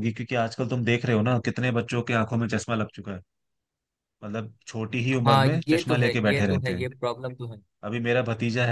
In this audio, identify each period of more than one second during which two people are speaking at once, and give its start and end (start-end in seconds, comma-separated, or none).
5.2-6.9